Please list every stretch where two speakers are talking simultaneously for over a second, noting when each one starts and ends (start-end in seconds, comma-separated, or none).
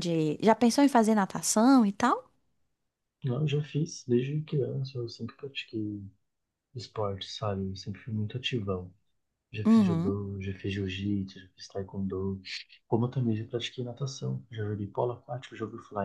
none